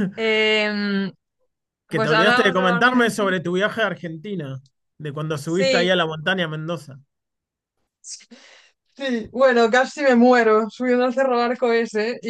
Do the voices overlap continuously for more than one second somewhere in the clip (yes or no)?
yes